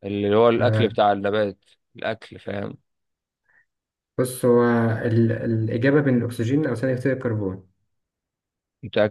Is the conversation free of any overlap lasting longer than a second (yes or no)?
yes